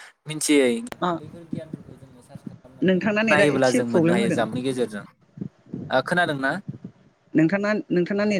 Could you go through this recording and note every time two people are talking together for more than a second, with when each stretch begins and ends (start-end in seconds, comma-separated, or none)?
2.9-4.4